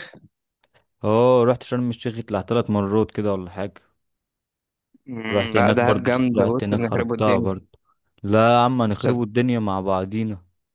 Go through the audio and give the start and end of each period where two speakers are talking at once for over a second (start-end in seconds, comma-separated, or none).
5.3-7.6